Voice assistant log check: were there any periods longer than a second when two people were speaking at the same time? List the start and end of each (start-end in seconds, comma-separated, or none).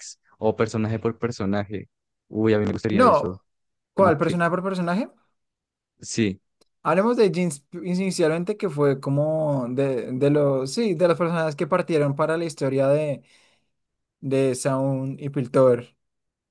none